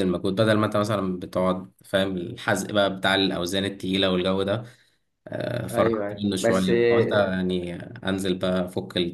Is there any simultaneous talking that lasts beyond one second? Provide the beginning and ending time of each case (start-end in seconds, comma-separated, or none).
5.7-7.4